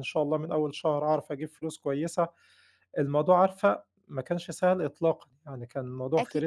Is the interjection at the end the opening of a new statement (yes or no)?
yes